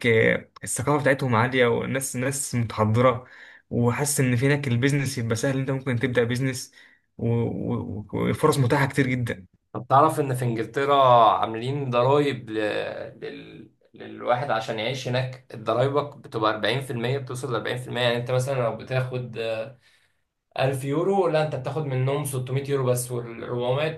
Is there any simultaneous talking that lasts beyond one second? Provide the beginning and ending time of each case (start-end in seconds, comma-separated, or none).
none